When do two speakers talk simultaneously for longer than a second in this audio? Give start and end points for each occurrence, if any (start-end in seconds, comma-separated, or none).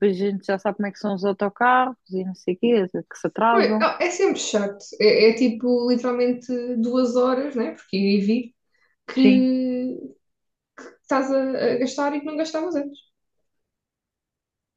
none